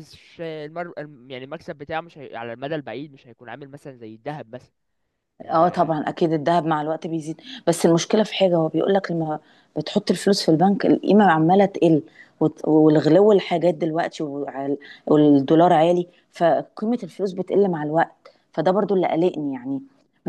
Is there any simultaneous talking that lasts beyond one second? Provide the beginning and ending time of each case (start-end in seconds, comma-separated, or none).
none